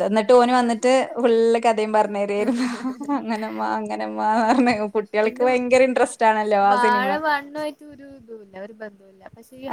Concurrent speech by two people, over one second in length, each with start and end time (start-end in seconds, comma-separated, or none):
none